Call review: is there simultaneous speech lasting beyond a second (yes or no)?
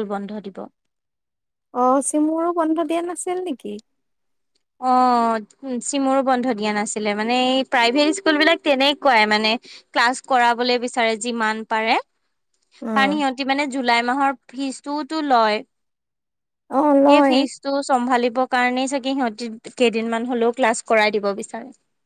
no